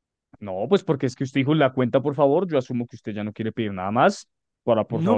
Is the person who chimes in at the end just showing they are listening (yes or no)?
no